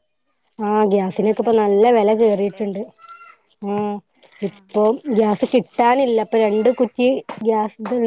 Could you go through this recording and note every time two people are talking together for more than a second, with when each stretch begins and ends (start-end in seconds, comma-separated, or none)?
0.9-2.6